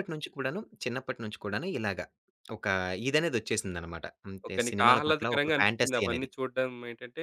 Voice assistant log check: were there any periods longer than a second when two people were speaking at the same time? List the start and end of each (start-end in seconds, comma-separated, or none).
4.5-6.3